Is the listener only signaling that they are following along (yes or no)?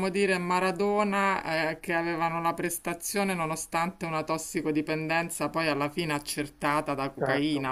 yes